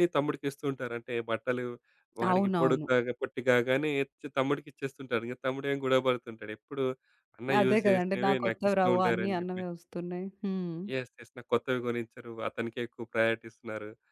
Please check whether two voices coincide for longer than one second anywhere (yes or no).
yes